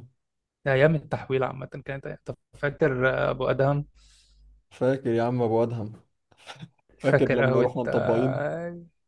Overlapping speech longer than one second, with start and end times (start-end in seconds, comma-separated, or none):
7.0-8.5